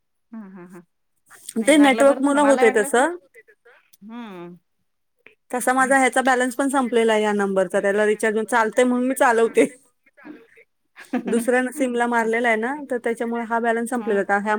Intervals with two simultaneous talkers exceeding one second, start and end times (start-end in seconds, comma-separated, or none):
1.7-3.1